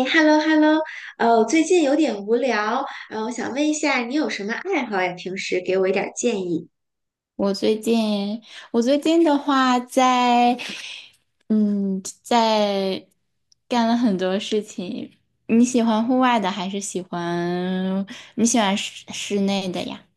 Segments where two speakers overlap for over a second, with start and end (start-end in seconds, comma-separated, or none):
none